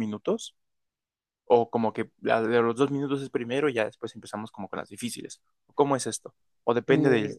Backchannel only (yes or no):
yes